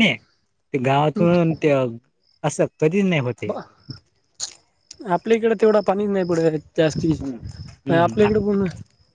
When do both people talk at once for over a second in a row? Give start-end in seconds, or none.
7.2-8.6